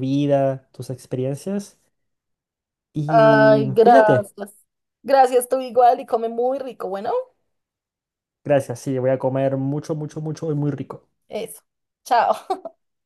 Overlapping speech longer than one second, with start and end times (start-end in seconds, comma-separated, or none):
3.1-4.3